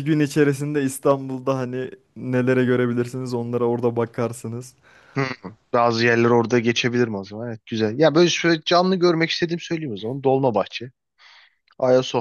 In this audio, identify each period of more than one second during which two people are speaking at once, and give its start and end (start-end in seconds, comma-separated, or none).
none